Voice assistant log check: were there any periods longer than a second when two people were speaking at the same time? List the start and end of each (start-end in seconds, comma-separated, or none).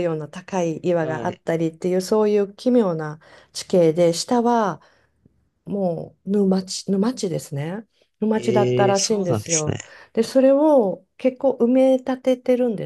8.3-9.8